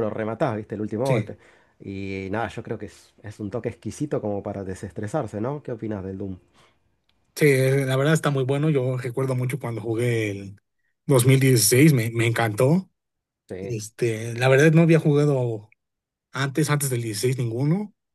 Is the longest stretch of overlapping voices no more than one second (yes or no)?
yes